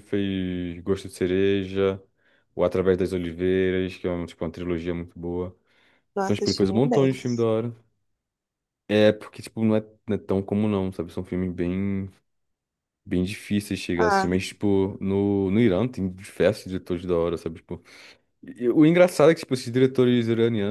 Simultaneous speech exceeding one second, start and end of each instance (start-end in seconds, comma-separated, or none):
6.2-7.5